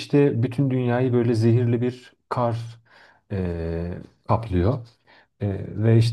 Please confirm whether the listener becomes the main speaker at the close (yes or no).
no